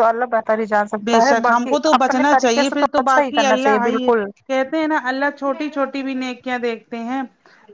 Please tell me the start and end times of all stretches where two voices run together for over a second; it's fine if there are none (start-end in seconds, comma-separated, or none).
1.1-4.1